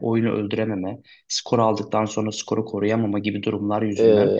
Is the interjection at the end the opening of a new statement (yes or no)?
no